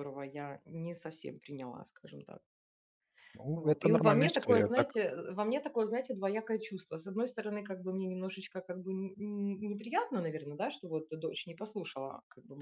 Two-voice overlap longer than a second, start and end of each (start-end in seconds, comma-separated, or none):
3.5-4.9